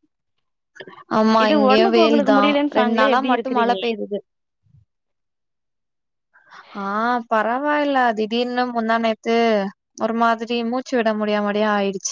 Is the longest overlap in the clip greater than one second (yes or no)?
yes